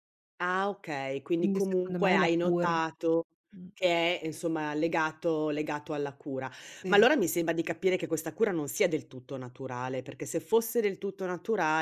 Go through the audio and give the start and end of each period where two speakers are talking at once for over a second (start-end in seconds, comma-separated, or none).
1.4-2.8